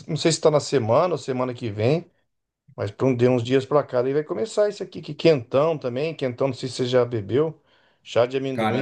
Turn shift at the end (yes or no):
no